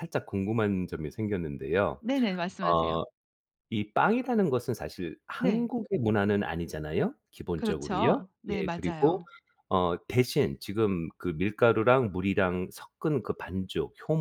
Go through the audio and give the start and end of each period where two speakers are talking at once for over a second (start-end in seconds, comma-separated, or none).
7.6-9.2